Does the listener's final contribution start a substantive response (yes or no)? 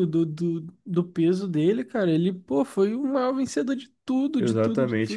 yes